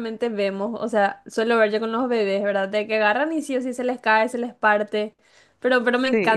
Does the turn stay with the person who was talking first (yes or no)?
yes